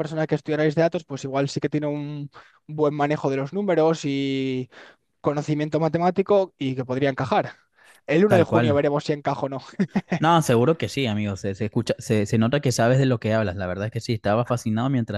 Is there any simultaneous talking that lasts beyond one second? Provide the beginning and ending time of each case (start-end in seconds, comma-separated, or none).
none